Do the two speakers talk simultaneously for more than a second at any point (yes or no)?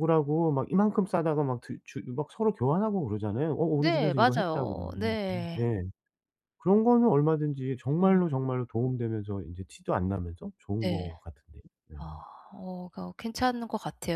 yes